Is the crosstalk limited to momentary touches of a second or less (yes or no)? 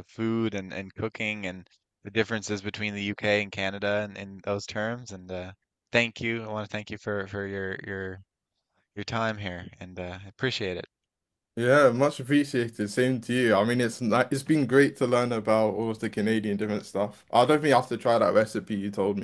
yes